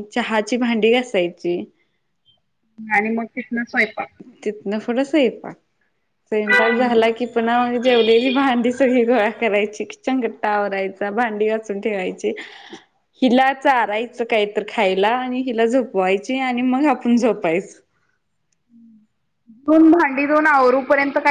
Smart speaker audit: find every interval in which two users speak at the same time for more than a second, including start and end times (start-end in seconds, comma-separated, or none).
none